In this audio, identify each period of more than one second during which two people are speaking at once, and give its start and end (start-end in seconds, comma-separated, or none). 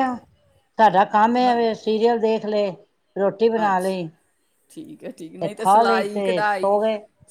5.4-6.8